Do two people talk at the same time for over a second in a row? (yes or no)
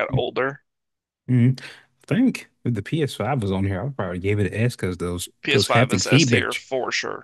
yes